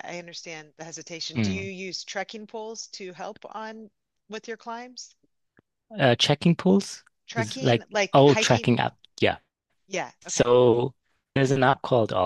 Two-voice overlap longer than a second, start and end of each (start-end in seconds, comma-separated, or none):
7.3-8.7